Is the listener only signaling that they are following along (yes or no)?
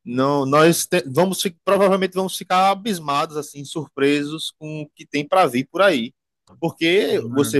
yes